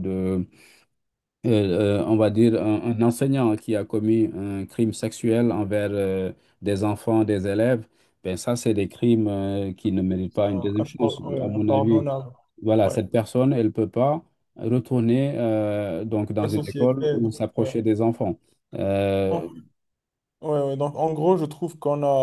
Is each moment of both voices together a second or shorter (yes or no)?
no